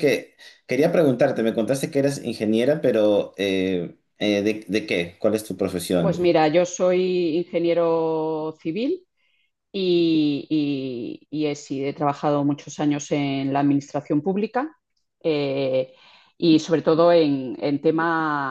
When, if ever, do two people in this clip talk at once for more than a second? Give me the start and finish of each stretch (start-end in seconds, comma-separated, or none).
none